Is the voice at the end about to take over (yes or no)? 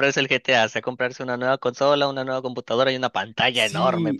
yes